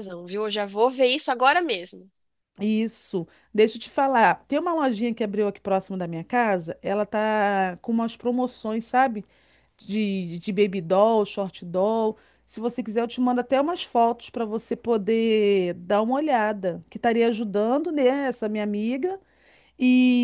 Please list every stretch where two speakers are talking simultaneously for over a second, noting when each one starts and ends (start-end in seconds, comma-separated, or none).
none